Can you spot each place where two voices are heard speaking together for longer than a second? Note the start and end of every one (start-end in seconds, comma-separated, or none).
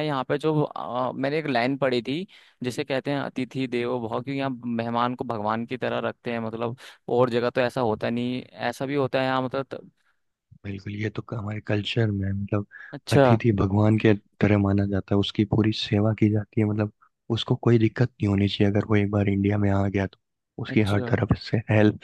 none